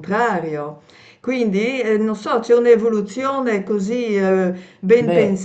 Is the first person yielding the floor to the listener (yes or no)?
no